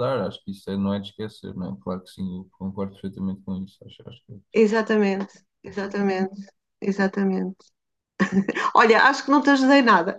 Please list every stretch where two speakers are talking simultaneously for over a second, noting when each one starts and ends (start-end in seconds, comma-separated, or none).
none